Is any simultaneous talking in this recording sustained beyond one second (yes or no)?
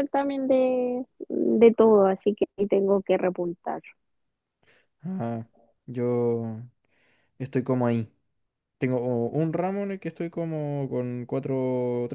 no